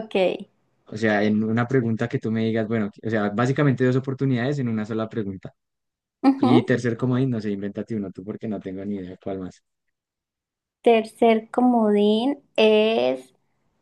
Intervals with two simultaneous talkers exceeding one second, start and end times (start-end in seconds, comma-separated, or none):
none